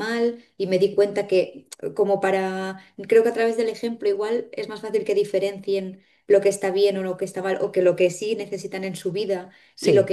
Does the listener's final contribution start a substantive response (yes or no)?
no